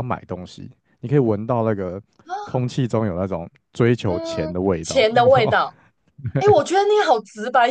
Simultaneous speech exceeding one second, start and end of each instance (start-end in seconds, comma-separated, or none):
4.1-5.5